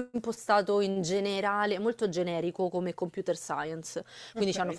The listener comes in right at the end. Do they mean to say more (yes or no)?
no